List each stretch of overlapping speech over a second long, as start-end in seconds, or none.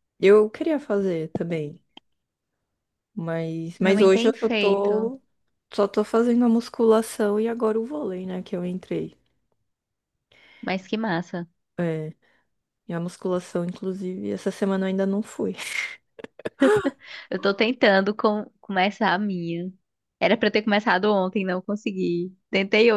3.8-5.1